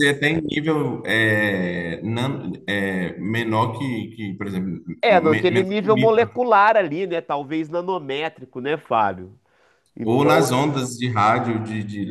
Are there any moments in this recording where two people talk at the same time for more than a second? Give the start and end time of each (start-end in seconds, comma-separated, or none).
5.0-6.3